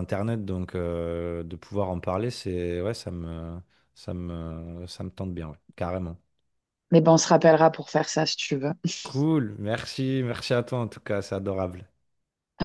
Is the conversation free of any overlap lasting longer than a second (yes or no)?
yes